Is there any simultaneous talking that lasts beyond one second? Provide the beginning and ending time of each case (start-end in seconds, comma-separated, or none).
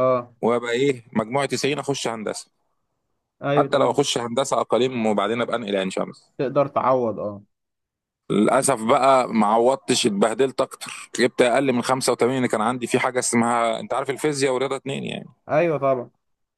none